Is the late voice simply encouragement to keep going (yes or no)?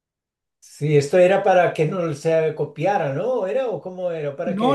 no